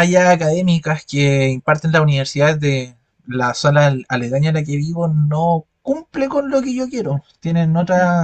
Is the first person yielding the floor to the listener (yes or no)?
no